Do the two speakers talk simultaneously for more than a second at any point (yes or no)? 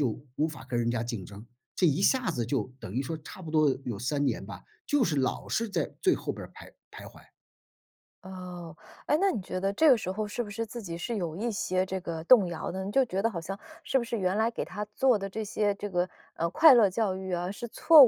no